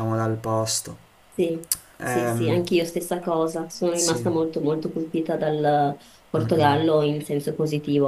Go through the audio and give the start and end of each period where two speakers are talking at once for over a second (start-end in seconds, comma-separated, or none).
none